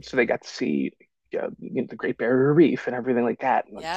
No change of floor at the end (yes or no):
no